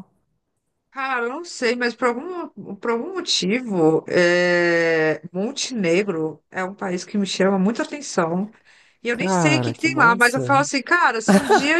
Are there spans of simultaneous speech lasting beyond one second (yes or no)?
yes